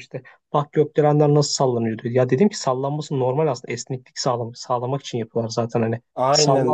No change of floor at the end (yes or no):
no